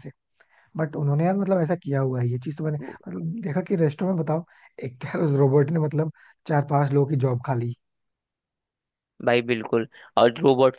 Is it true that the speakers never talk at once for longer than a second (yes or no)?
yes